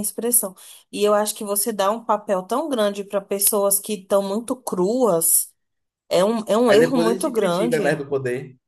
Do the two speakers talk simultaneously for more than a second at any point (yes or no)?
yes